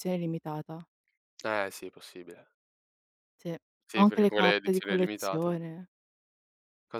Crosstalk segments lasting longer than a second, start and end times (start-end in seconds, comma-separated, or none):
3.9-5.6